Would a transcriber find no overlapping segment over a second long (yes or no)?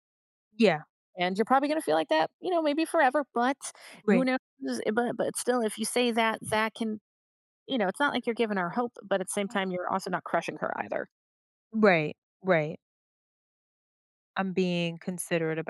yes